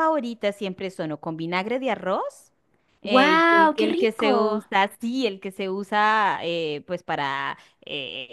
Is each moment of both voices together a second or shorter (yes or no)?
no